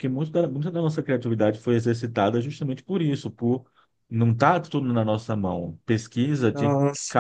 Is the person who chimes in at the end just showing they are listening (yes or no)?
yes